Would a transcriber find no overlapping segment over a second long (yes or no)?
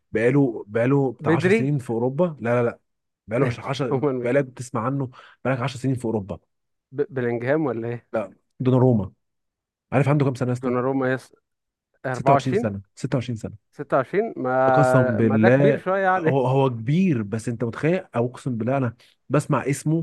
no